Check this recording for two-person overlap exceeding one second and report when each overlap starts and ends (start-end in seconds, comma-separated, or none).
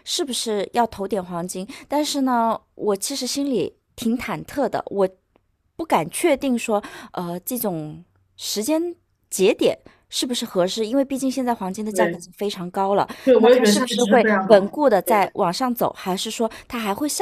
13.2-15.3